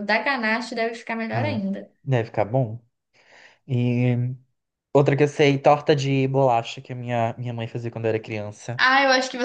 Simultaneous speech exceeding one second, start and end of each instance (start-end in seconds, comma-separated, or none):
none